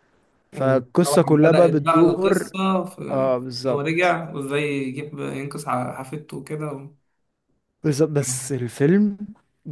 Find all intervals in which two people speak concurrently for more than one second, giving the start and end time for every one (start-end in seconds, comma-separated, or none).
0.5-2.5